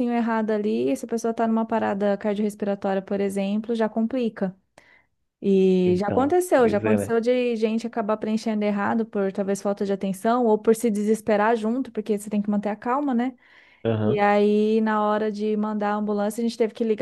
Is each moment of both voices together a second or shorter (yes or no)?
no